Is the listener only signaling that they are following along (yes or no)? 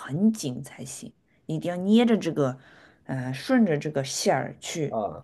yes